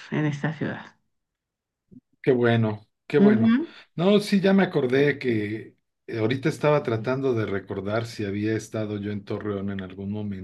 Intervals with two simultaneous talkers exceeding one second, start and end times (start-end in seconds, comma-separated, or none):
none